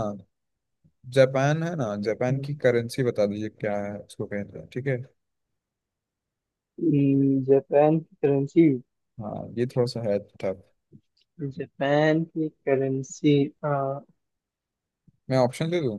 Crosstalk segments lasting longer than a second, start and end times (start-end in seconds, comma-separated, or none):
none